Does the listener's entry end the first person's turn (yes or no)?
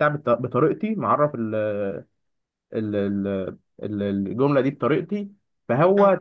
no